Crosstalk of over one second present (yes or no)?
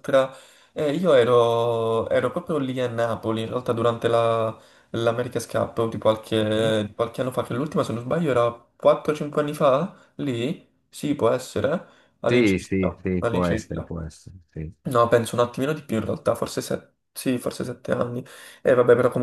yes